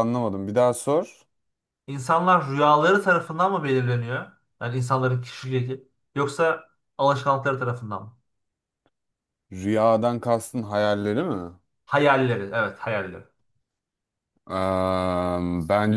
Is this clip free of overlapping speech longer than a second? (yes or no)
yes